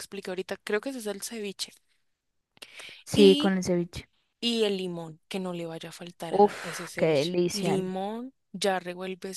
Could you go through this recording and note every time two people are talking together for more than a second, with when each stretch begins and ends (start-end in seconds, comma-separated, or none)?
6.3-7.8